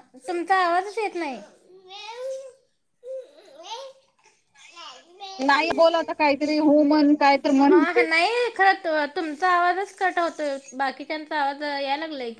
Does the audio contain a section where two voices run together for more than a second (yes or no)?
no